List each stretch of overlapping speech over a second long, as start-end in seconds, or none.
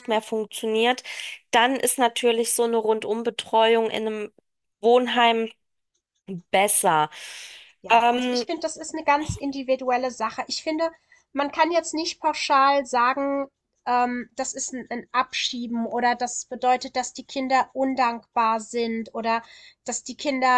none